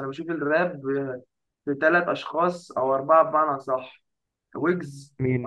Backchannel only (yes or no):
yes